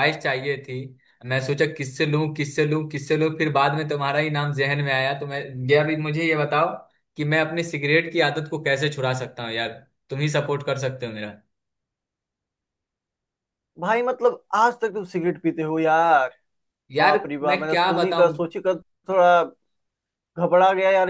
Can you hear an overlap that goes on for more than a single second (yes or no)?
yes